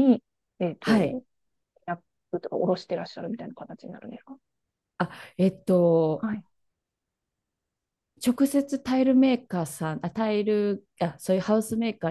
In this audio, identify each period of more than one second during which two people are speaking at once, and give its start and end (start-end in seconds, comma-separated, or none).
none